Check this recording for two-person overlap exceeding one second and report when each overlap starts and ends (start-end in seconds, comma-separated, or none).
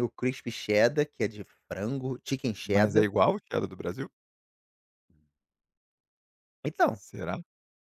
none